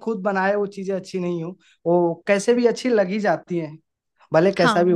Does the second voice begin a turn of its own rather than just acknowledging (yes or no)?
yes